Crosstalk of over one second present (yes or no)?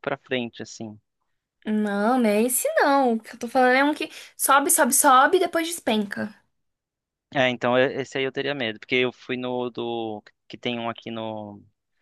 no